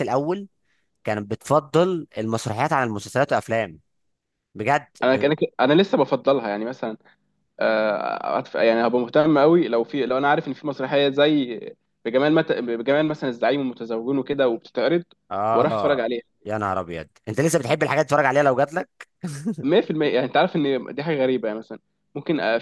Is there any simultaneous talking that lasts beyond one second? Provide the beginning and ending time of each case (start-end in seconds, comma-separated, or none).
none